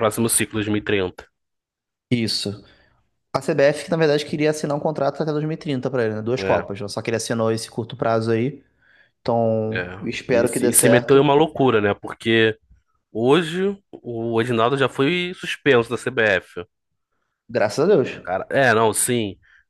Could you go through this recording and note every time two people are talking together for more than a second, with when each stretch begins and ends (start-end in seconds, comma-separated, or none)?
9.7-11.3